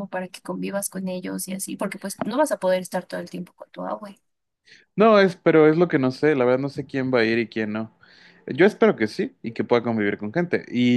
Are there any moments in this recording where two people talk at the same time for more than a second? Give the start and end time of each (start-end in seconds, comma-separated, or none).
none